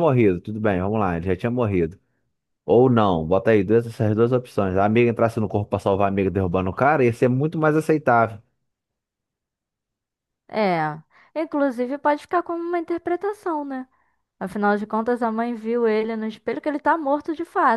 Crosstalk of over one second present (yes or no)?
no